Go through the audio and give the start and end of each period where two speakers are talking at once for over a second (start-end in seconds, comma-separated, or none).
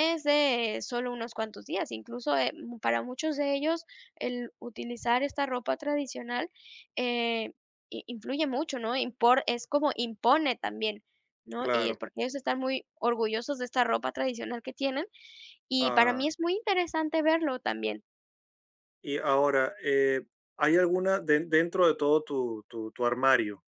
none